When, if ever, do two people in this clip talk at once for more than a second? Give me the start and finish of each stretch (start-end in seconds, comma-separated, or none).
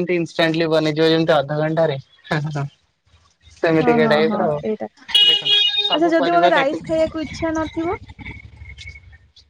5.3-6.8